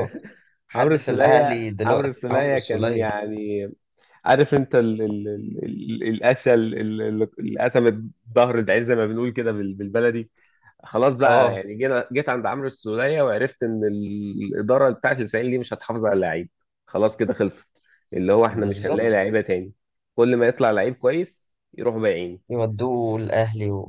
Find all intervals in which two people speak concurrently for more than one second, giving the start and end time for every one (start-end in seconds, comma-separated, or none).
0.7-3.0